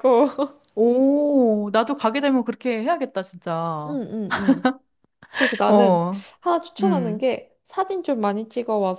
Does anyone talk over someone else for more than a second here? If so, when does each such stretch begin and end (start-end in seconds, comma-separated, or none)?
none